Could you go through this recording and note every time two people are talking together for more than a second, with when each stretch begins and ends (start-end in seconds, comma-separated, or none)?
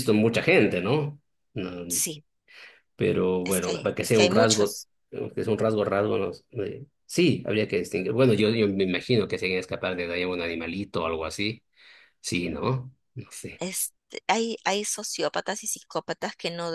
3.4-4.9